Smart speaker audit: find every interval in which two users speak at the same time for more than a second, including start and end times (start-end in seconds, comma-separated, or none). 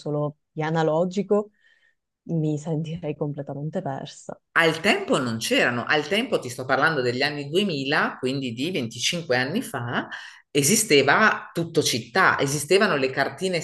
none